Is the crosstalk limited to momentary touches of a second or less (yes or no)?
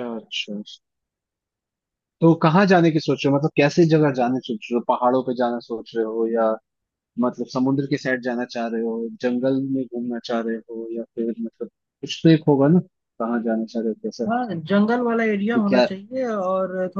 yes